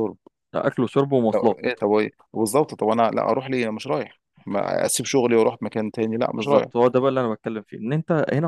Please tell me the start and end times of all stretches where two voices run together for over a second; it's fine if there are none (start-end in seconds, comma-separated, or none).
none